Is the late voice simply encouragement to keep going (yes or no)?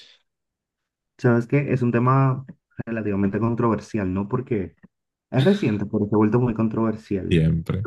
no